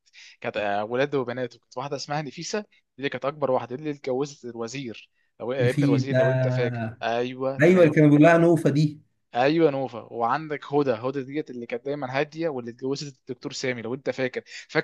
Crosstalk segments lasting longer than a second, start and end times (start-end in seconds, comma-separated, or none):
none